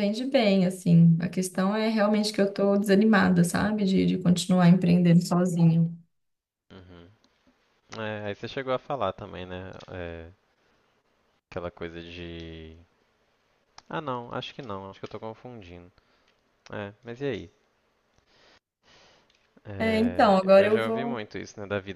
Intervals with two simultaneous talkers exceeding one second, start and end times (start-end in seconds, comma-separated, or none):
19.8-21.2